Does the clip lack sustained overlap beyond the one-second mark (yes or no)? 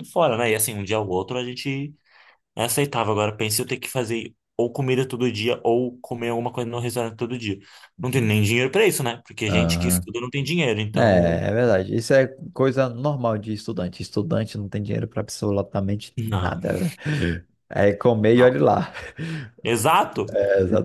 yes